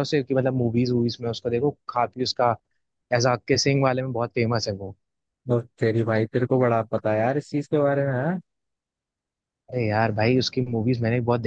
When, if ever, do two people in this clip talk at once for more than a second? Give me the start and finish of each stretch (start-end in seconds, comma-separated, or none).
none